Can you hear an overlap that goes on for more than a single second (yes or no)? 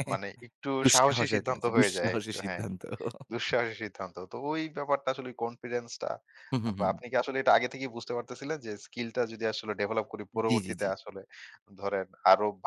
yes